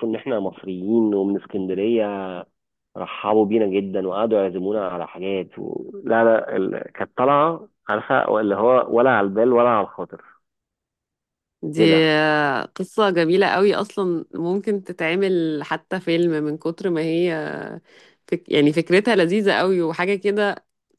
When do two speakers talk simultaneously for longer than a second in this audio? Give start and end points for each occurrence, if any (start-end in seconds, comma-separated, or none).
none